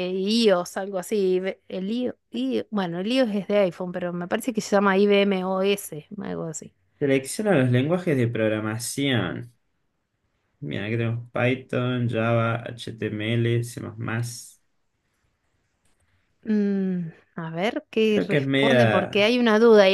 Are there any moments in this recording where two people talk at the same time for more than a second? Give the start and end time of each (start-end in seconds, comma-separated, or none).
18.1-19.3